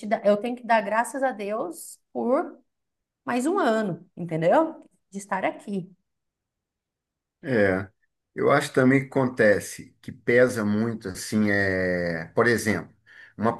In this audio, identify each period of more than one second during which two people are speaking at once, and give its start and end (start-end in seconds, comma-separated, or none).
none